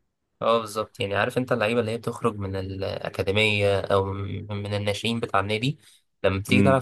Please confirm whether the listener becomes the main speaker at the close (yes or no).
no